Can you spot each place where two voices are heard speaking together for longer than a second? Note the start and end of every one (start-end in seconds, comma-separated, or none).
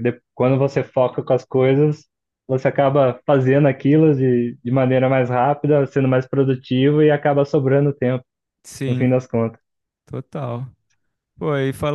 none